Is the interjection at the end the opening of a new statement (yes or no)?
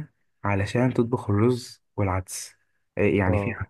no